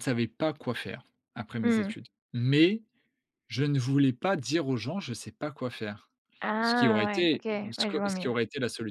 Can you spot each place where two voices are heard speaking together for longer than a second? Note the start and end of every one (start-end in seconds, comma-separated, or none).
6.6-8.3